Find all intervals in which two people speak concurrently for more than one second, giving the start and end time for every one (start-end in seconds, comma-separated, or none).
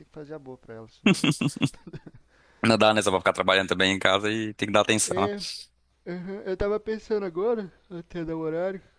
none